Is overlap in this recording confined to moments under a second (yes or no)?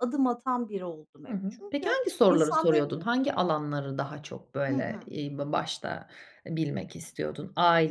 no